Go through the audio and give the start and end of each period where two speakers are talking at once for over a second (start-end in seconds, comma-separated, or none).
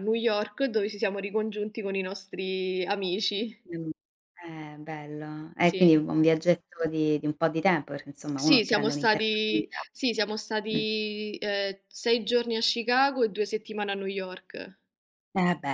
8.4-9.9